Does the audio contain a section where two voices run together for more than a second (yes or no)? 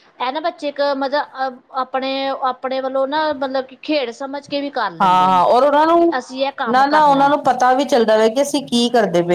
yes